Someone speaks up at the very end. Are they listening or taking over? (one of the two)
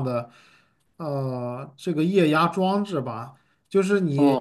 listening